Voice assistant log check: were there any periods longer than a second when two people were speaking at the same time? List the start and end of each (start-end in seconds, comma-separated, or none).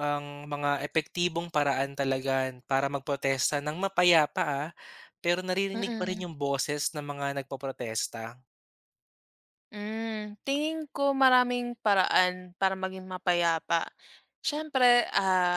none